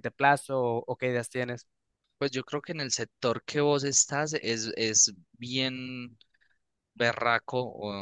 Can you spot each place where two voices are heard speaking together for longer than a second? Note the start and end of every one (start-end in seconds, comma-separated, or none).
none